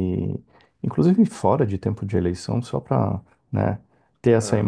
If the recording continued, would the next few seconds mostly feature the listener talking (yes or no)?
no